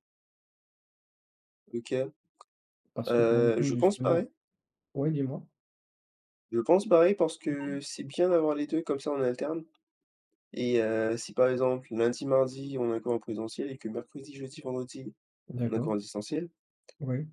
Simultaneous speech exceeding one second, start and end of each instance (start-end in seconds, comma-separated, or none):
3.1-4.3